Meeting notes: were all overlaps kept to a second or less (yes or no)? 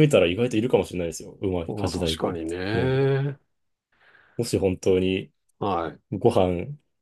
no